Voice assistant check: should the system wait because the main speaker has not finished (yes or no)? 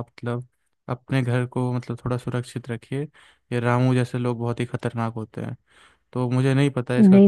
no